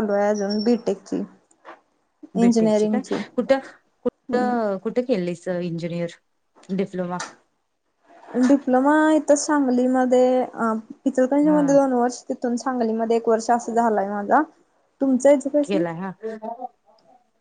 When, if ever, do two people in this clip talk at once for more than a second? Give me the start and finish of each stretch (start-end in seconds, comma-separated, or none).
none